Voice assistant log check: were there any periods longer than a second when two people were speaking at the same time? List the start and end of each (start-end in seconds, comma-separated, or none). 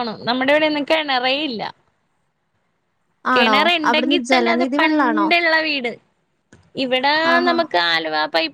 3.4-5.3